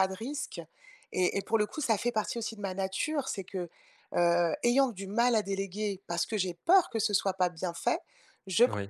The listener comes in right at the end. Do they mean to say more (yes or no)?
no